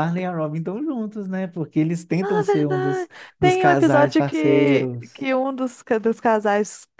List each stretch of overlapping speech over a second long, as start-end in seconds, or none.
2.2-5.3